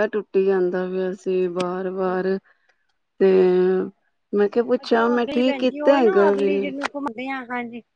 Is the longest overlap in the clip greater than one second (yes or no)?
yes